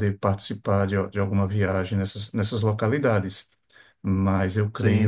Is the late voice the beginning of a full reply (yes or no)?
no